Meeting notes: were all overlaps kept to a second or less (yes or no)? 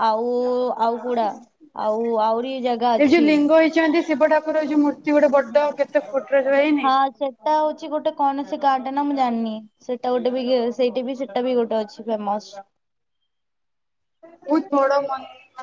yes